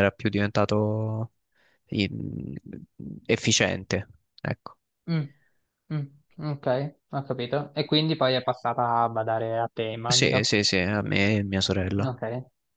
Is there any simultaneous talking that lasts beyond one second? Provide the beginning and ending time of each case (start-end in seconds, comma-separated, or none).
none